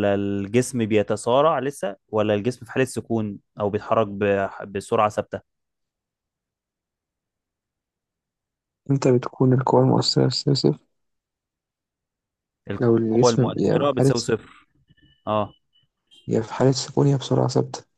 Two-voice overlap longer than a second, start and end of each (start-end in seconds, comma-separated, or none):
12.8-14.3